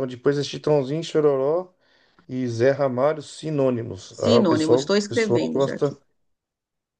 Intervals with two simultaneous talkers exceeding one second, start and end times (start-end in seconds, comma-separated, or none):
4.1-6.0